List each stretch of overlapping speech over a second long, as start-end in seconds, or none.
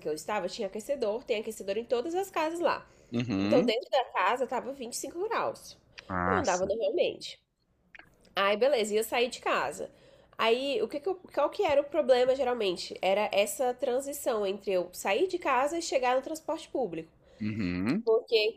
none